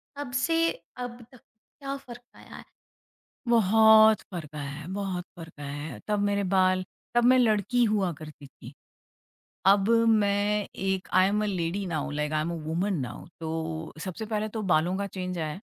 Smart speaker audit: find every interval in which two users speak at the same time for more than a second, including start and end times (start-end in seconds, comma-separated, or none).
none